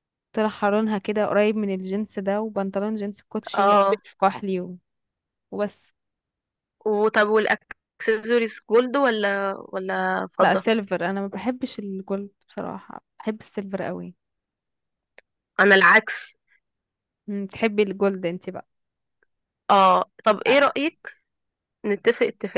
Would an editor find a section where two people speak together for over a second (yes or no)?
no